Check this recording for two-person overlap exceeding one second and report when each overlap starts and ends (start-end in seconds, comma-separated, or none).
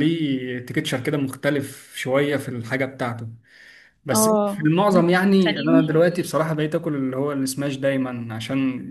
4.1-6.3